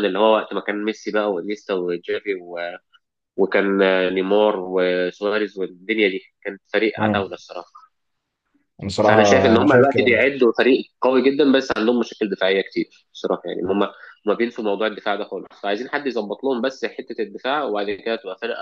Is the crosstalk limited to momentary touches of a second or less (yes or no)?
no